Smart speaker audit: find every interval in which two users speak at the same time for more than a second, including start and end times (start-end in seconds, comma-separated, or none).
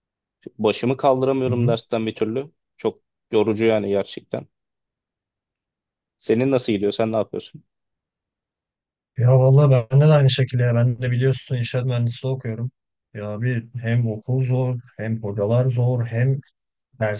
none